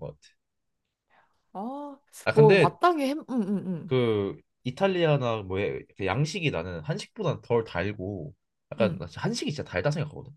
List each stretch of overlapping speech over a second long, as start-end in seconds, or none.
none